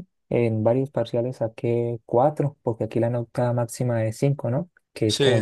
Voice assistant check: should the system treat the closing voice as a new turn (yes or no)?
no